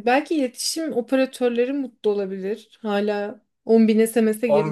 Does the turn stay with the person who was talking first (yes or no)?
no